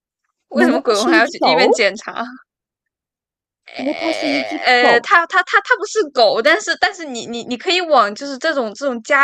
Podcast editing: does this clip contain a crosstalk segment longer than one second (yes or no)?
yes